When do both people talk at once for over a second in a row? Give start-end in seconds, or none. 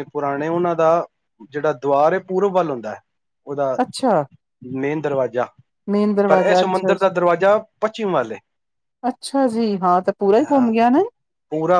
none